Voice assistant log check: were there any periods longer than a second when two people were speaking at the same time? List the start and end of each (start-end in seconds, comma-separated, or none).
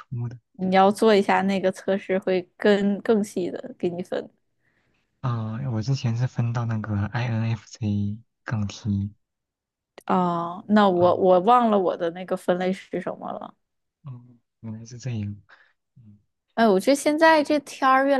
none